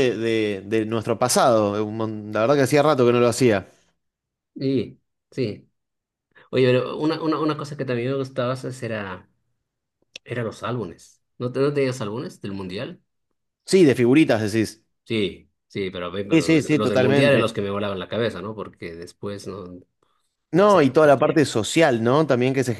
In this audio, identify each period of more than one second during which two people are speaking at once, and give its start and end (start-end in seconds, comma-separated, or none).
16.3-17.6